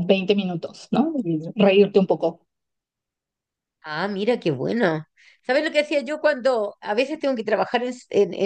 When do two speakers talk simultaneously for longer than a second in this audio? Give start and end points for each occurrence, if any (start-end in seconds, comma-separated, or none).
none